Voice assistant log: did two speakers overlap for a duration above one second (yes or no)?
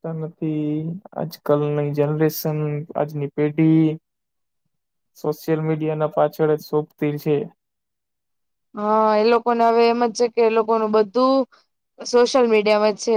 no